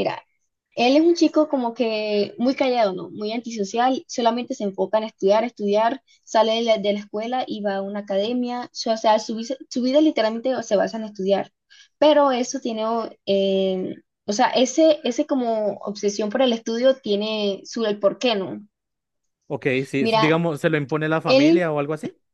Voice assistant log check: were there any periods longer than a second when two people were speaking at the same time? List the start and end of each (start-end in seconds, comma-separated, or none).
none